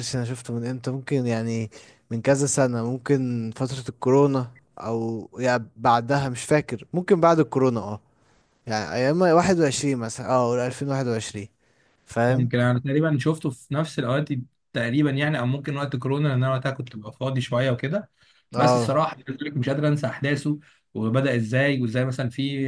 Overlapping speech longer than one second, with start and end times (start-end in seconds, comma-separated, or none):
none